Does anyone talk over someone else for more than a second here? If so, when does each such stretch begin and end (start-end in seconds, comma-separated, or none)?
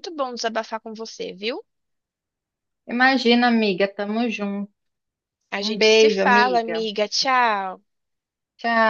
5.6-6.9